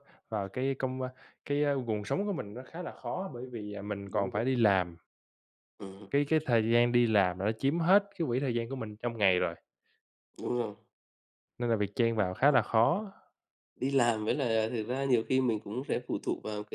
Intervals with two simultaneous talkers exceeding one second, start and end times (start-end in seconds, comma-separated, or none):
none